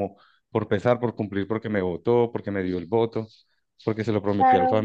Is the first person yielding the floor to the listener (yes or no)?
yes